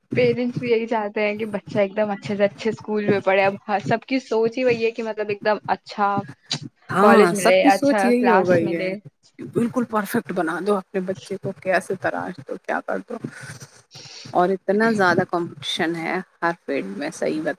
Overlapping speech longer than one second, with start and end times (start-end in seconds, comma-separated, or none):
7.0-8.9